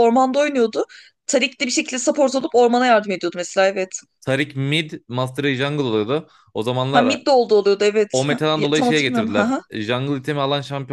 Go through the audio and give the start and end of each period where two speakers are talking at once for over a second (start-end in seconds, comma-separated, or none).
8.1-9.6